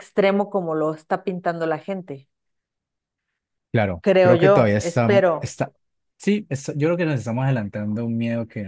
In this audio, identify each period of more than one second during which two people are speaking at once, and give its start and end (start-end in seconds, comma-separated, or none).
4.0-5.5